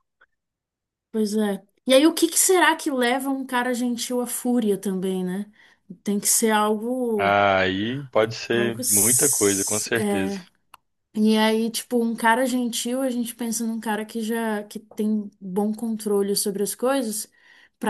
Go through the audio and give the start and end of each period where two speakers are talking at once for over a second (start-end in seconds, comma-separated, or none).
8.5-10.4